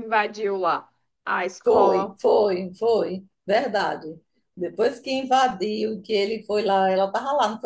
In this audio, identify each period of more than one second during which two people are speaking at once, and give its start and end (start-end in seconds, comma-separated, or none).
none